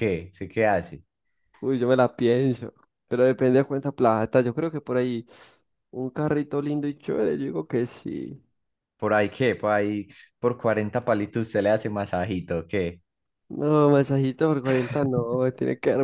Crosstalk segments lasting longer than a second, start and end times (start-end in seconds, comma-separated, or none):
none